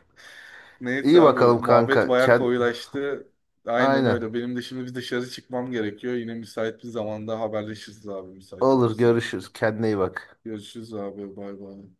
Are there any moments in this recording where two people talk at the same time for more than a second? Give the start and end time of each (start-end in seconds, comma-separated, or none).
1.0-2.5